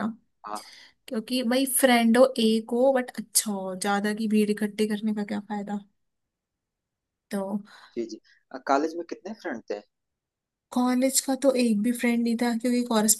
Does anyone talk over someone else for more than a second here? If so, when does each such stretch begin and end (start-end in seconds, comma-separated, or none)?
none